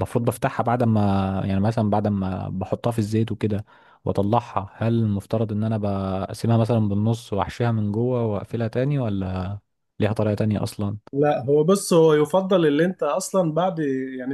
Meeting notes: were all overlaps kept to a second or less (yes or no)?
yes